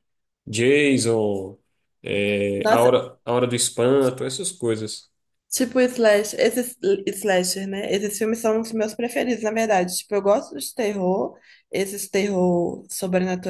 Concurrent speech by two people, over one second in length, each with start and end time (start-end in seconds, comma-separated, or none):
none